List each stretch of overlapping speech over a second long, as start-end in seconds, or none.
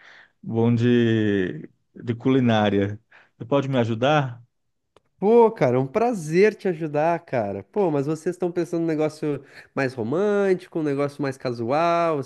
none